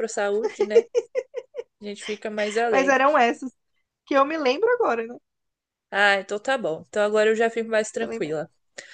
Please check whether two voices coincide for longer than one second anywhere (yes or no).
no